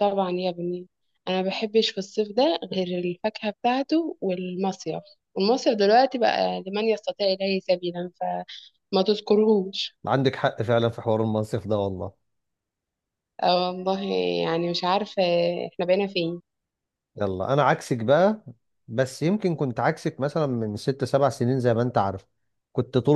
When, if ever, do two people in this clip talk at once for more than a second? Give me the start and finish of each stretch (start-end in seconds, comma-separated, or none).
none